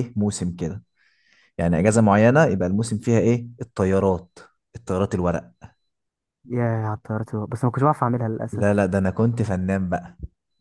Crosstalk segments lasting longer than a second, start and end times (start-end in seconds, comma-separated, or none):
none